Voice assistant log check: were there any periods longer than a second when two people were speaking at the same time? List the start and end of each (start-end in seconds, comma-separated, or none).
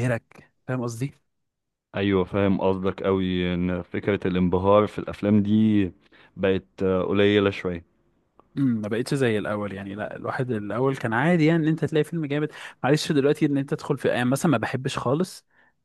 none